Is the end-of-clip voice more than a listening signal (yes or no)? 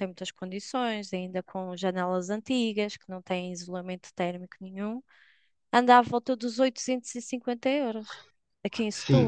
yes